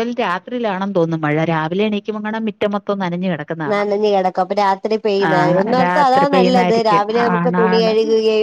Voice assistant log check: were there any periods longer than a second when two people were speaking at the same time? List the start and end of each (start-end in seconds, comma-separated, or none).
5.8-7.9